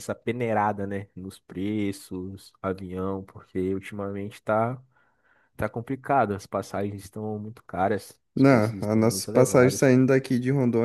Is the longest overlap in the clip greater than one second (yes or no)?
yes